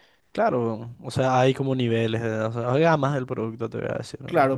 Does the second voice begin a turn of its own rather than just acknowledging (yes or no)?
yes